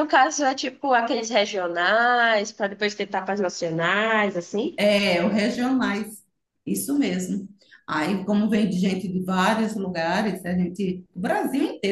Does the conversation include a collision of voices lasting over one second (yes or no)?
no